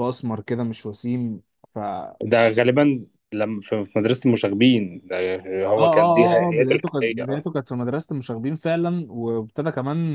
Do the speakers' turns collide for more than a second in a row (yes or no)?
yes